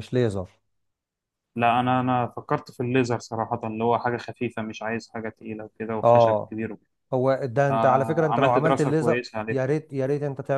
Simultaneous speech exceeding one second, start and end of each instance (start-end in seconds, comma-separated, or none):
7.7-9.6